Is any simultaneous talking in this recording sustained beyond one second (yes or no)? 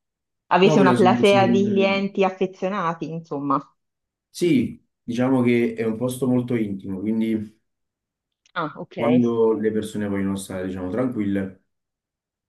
yes